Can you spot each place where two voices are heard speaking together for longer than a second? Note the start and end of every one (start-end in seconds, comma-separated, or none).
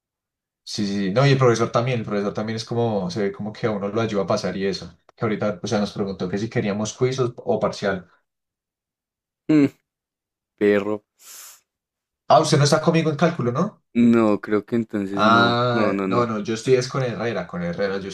15.1-16.3